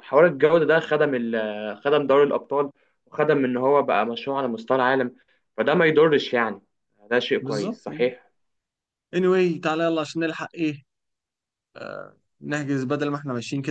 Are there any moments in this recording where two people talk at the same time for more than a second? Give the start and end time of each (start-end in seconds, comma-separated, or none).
none